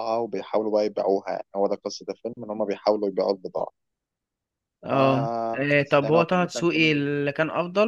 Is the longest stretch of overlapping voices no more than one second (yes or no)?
no